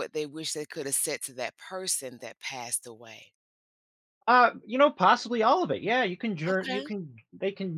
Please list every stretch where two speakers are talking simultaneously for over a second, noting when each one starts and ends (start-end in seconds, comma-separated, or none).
none